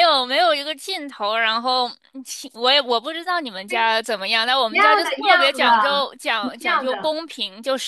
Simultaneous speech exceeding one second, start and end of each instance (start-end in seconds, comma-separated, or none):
4.7-7.1